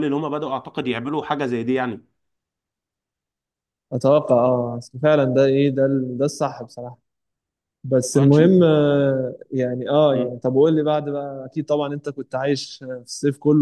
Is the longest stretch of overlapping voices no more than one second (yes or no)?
yes